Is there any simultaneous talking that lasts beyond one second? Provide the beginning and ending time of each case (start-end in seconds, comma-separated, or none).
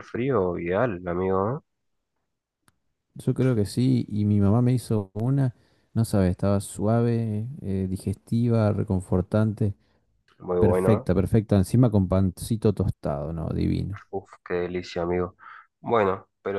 none